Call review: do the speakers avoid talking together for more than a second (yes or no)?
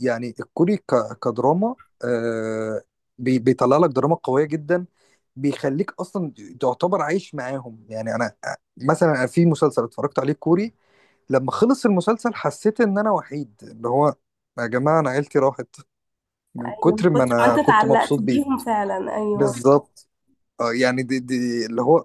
no